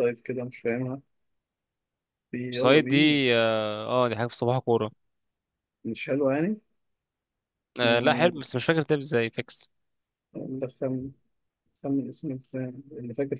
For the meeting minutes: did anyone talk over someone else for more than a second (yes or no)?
no